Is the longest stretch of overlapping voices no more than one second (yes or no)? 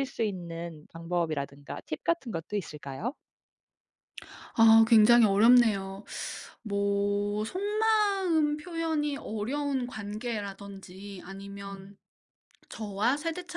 yes